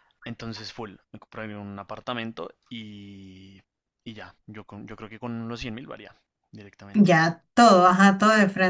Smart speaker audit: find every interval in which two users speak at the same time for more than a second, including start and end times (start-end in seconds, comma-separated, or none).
none